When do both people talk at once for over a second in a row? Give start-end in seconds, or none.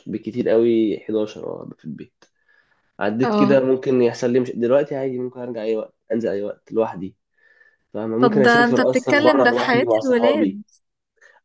8.2-10.6